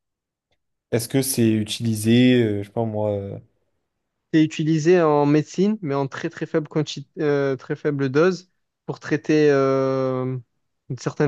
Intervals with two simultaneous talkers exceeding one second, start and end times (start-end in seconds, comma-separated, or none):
none